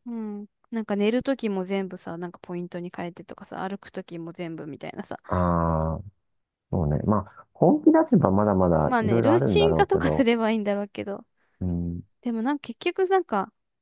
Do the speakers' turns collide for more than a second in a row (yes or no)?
yes